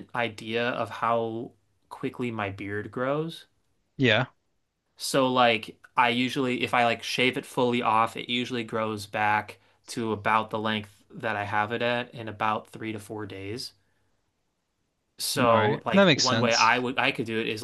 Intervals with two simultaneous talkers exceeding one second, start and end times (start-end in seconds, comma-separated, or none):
15.4-16.8